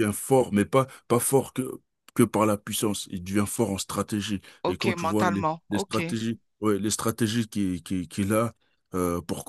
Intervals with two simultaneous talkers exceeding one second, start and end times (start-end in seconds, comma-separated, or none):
4.6-6.2